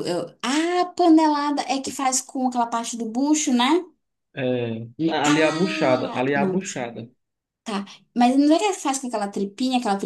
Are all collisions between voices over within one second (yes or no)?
no